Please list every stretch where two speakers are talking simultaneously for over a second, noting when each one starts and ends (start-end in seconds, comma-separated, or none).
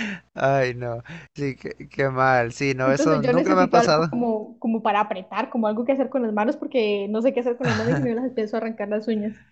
2.8-4.1